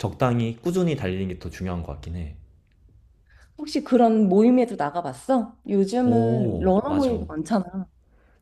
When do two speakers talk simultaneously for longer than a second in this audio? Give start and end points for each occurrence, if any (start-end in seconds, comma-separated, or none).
6.0-7.3